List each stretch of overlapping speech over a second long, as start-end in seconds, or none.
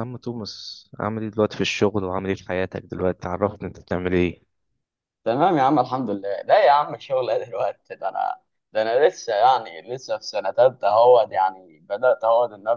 none